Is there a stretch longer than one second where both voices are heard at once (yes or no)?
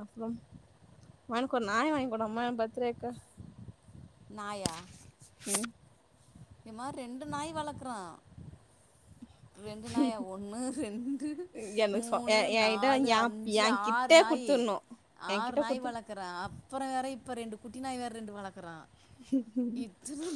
yes